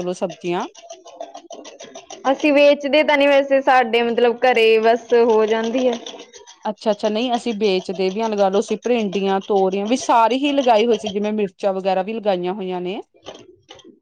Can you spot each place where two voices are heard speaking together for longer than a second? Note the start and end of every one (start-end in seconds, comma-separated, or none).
none